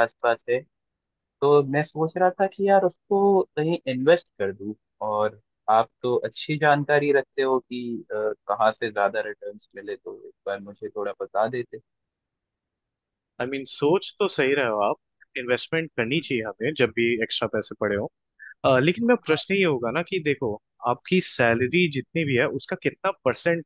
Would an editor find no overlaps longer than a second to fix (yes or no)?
yes